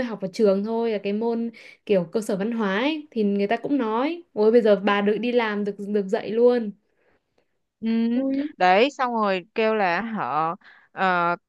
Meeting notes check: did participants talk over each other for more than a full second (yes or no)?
no